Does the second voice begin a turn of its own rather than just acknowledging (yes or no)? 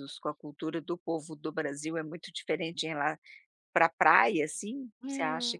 yes